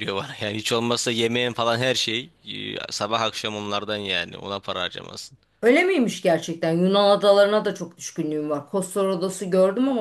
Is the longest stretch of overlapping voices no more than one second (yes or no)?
yes